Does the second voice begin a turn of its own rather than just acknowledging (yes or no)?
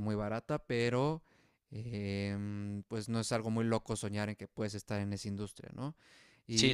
no